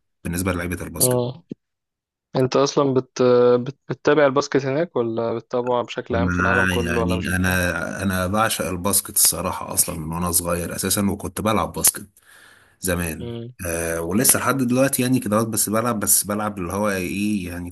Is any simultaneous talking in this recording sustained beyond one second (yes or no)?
yes